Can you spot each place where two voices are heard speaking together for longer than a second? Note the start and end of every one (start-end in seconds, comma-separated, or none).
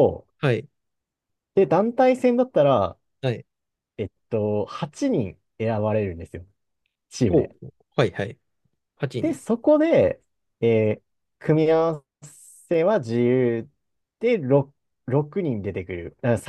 none